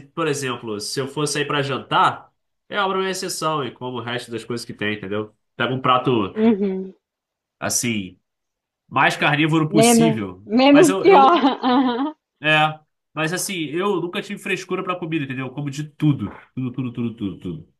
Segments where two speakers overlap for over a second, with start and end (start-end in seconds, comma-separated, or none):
9.8-11.5